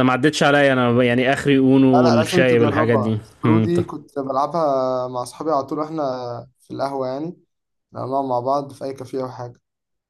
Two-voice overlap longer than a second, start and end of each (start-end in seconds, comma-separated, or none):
1.9-3.8